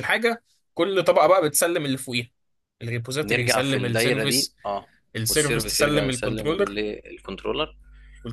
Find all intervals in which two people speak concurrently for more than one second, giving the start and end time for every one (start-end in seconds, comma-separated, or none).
3.2-4.6, 5.3-6.8